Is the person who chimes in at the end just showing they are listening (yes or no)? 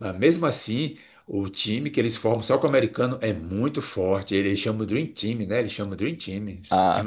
no